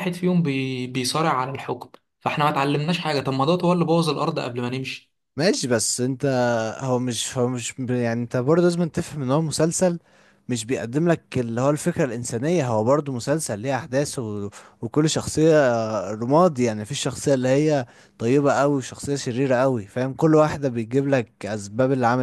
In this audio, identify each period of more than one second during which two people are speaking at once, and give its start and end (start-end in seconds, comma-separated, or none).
none